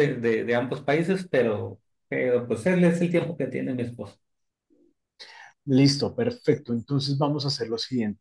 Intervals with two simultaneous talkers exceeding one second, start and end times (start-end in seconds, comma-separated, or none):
none